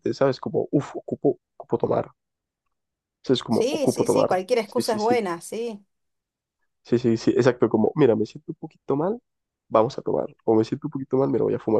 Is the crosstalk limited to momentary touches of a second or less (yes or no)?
no